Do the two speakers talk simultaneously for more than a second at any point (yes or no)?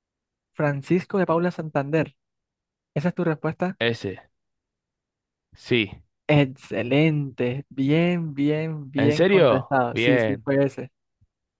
yes